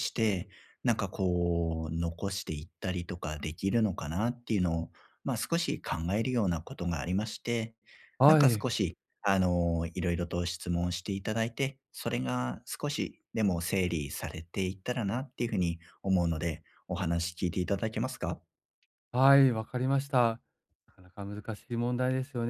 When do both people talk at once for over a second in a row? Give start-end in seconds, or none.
none